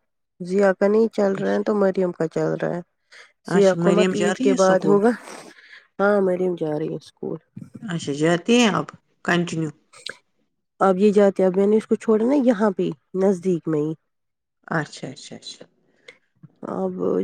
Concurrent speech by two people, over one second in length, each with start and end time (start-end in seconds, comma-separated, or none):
3.6-5.0